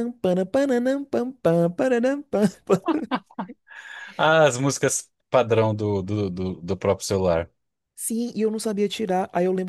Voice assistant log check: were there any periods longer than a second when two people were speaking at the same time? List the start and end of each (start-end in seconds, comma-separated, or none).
none